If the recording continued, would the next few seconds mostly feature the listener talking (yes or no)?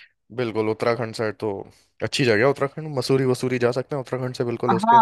yes